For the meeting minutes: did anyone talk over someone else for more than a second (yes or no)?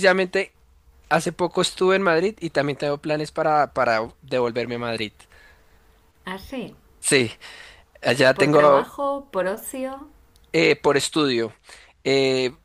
no